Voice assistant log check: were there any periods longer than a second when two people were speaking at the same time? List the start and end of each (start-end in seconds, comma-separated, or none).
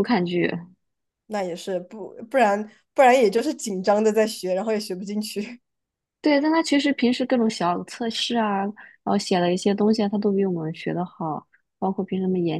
none